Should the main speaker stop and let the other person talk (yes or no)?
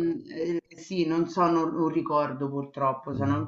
no